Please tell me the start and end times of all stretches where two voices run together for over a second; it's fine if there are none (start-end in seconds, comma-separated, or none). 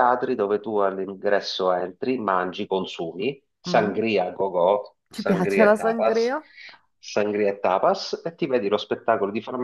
5.1-6.4